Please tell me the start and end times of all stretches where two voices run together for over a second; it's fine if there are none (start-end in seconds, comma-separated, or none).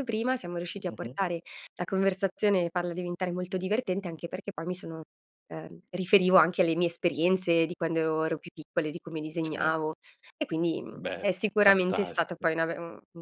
10.9-12.5